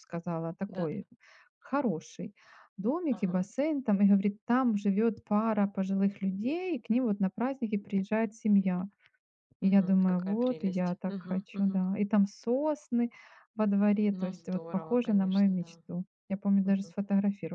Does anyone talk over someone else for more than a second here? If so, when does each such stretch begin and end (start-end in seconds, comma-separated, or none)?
9.6-11.8, 14.1-15.8